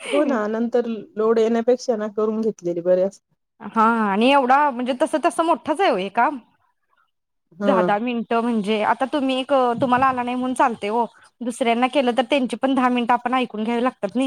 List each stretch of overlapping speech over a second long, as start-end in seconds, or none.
none